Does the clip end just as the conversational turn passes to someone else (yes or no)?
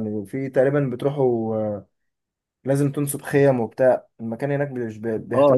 yes